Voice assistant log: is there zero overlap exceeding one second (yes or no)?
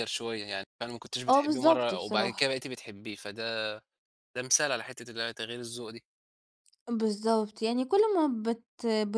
no